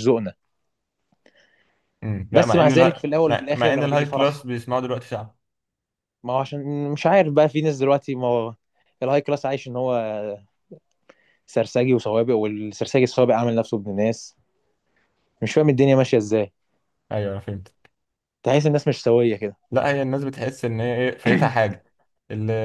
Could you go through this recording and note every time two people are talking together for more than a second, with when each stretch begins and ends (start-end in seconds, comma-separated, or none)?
2.3-4.4